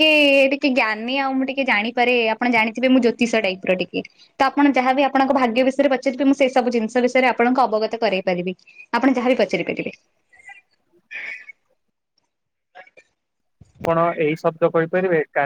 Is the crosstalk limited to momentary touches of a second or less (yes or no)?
yes